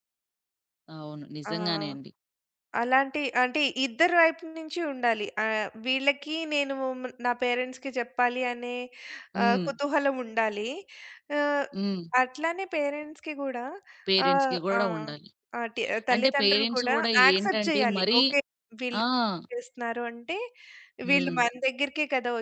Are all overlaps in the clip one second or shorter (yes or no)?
no